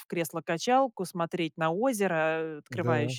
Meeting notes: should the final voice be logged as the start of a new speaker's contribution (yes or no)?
no